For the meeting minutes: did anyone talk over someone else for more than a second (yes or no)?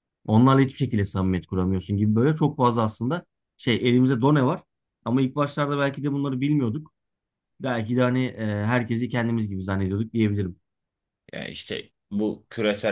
no